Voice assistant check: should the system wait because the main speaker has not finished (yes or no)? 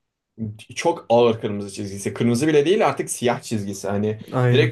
yes